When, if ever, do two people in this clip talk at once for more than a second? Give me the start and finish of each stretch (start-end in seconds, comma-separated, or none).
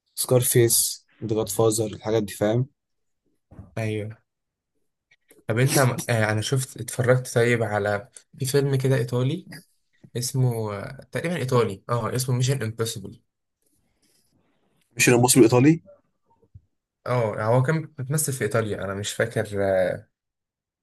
none